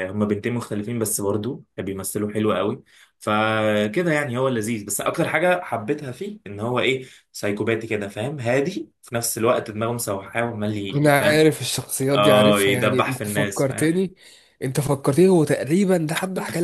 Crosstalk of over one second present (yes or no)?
yes